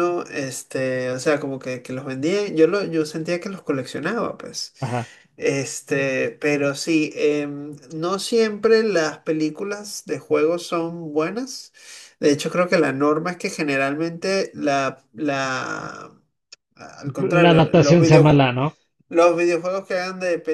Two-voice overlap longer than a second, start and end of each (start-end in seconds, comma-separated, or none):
17.3-18.5